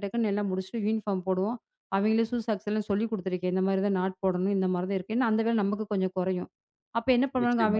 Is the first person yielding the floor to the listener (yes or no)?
no